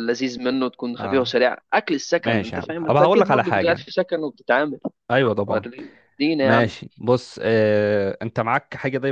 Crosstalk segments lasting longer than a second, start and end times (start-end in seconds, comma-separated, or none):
2.2-3.8